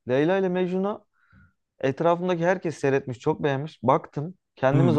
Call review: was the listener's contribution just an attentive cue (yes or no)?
yes